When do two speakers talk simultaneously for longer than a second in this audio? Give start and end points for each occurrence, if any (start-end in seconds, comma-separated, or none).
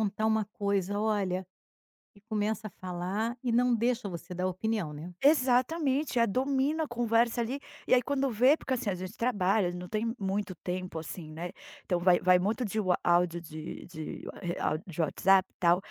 none